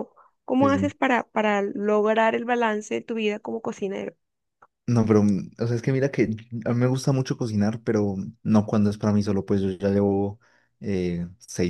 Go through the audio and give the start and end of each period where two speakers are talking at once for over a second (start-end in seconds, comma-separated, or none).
none